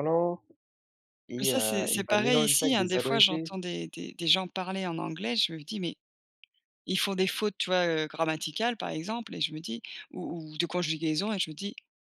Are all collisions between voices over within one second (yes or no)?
no